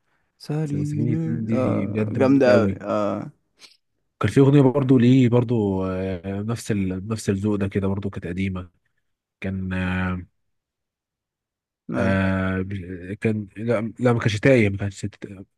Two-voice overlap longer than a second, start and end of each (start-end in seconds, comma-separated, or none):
0.6-2.8